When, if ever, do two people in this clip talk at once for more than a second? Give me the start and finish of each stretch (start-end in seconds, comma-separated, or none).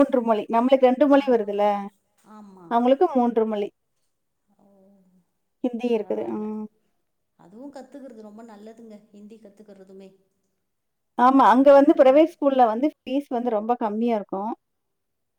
none